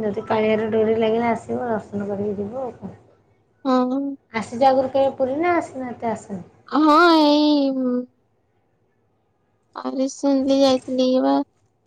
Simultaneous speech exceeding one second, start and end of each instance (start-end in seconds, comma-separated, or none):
none